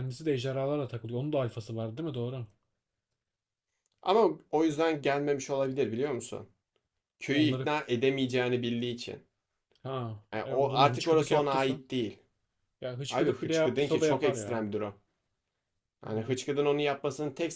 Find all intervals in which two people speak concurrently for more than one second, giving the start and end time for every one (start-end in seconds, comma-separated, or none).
10.3-11.8, 13.1-14.6